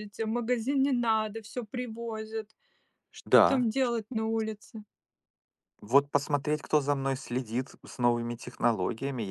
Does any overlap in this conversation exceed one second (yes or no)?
no